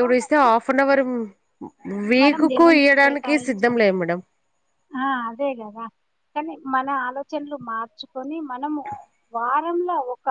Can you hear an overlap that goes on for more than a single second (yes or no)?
yes